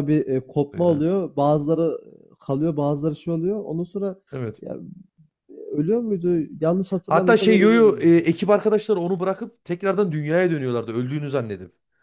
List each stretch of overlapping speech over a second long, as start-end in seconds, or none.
7.1-8.3